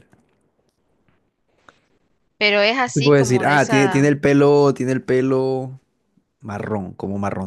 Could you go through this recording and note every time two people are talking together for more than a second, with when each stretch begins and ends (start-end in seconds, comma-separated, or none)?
2.9-4.2